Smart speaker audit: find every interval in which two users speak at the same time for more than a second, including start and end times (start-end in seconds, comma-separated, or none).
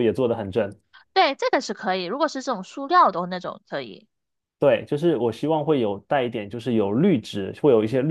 none